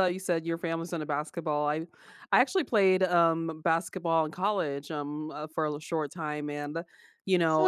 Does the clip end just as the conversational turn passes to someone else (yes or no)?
no